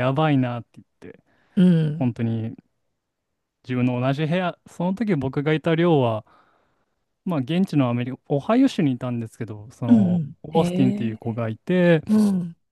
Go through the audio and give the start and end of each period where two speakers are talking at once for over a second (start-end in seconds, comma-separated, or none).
9.9-11.4